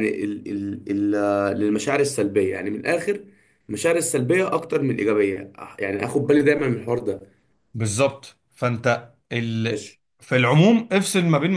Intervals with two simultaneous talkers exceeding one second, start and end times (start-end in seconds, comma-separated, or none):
none